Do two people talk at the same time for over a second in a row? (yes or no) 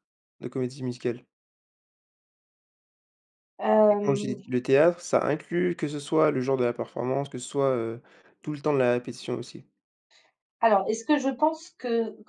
no